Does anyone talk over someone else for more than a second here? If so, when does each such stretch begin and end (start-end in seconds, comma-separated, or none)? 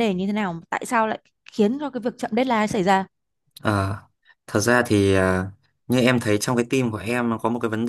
none